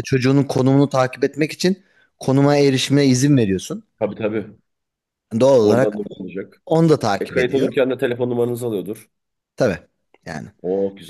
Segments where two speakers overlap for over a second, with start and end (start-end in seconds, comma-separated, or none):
none